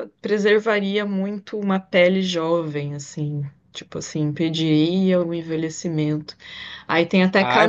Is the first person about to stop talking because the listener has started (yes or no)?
yes